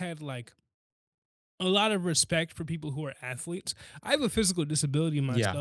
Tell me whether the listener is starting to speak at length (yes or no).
no